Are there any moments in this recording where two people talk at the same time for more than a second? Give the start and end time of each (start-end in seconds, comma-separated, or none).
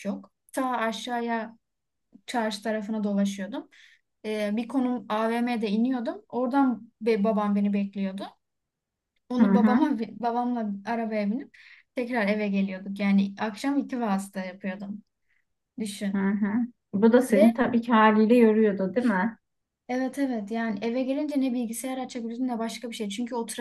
none